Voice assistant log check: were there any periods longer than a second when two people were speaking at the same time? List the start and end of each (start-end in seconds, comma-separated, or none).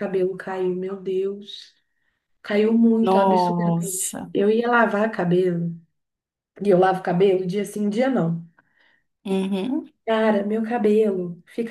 3.0-4.3